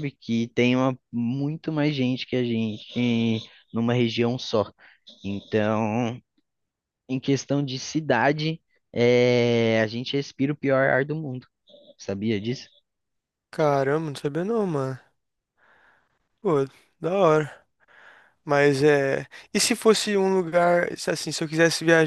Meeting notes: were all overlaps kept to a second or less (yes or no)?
yes